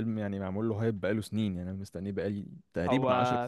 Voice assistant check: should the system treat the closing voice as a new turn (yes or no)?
yes